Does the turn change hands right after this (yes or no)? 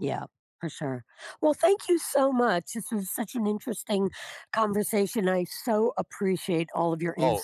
yes